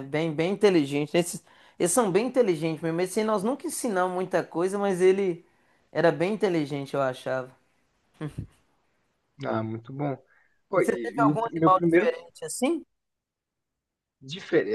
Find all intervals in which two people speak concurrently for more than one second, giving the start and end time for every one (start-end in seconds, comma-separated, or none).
10.8-12.1